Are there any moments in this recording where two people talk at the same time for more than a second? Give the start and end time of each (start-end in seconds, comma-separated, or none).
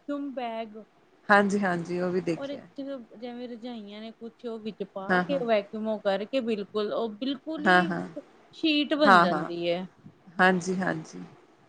none